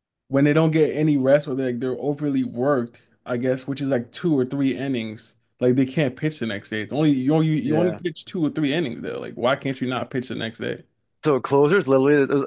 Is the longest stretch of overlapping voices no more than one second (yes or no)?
yes